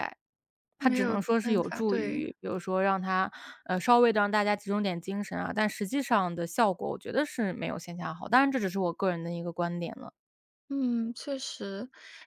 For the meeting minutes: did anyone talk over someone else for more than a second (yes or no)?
yes